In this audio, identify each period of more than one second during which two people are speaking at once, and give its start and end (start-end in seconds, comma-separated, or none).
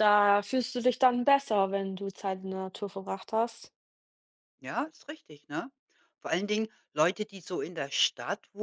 none